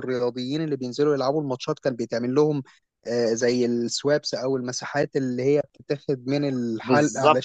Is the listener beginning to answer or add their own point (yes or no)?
yes